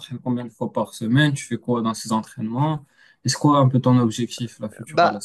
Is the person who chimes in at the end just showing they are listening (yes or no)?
no